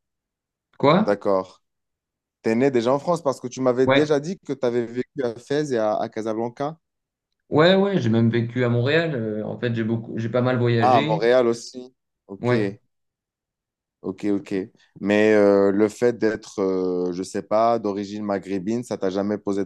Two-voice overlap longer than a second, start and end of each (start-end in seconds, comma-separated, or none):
none